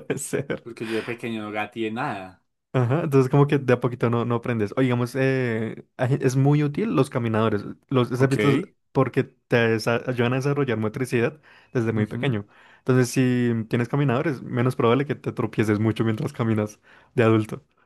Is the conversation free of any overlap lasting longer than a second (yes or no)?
yes